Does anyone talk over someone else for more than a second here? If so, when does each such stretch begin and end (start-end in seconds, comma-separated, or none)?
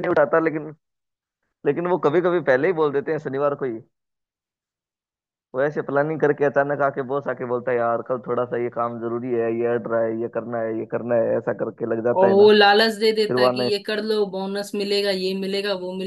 none